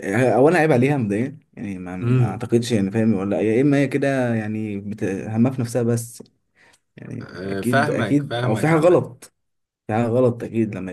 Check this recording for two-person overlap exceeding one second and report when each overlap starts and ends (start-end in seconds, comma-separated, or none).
7.2-9.0